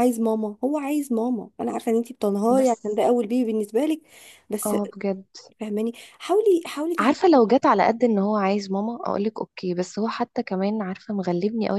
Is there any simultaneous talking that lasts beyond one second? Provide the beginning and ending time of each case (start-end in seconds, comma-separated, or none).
none